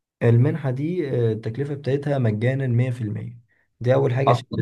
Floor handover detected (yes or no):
no